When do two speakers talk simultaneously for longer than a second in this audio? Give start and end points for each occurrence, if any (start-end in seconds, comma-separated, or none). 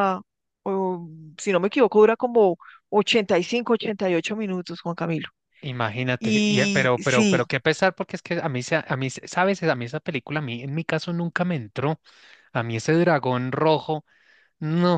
6.2-7.4